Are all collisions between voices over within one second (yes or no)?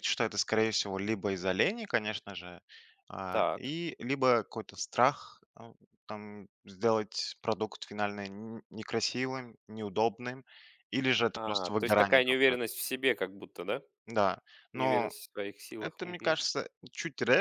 no